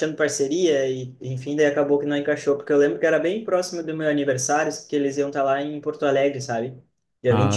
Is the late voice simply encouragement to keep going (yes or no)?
yes